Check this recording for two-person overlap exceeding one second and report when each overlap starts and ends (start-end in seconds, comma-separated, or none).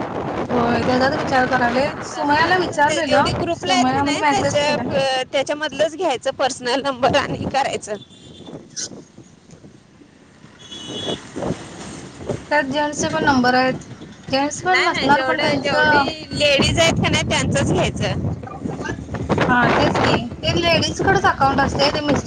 2.0-3.7, 14.7-16.0